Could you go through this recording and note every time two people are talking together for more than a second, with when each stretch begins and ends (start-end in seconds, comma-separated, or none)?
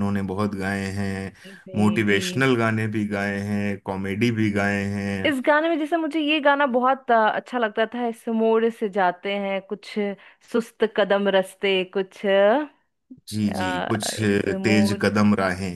13.3-15.1